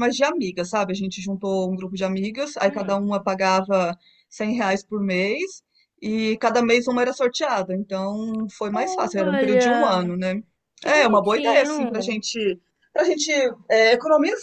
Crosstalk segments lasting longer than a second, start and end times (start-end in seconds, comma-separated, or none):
8.7-10.1, 10.8-12.2